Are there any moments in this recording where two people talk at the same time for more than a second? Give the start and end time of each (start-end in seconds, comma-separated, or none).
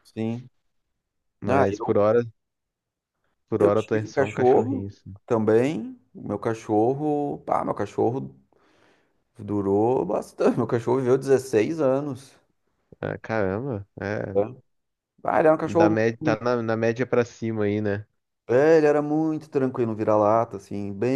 3.6-5.1